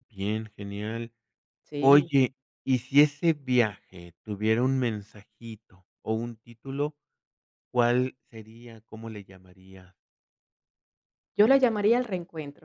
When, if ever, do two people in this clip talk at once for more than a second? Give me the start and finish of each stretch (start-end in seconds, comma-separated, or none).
none